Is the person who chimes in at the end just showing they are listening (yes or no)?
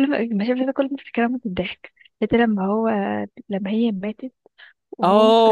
no